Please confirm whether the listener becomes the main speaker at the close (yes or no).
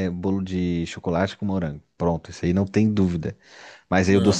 no